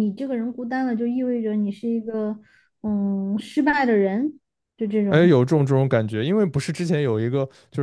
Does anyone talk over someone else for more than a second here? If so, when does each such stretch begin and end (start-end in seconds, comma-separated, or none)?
none